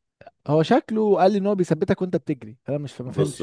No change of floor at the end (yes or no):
no